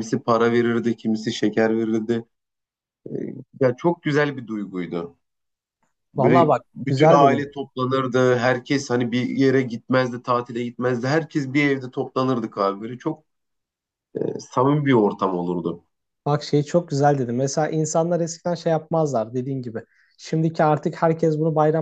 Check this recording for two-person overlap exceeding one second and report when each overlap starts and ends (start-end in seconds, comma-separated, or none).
6.2-7.6